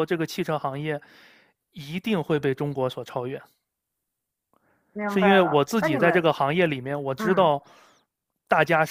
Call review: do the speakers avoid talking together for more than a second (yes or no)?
no